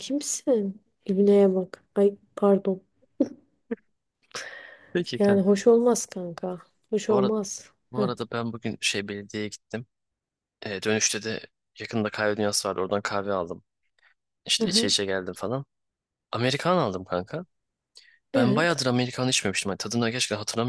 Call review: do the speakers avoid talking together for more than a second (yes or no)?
yes